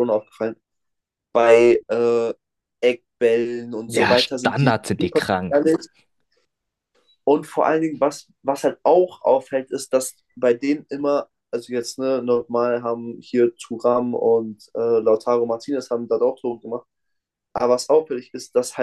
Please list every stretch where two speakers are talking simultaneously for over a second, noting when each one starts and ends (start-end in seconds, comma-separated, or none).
3.9-5.6